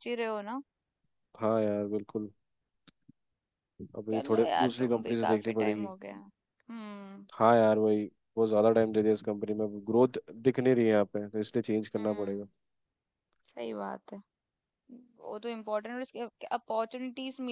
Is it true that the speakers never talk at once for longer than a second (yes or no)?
no